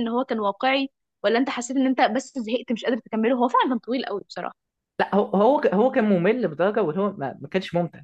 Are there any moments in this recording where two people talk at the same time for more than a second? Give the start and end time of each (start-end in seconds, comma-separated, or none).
none